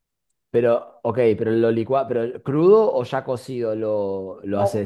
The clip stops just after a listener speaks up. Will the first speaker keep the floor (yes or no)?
no